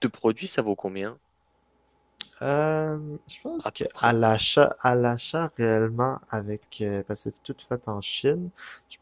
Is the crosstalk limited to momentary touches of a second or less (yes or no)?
yes